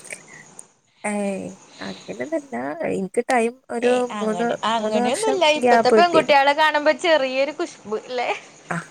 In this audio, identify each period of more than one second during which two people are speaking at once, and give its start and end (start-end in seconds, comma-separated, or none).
3.9-6.4